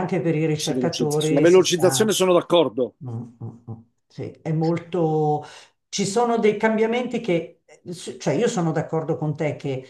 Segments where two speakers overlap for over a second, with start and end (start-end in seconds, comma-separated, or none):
0.6-2.2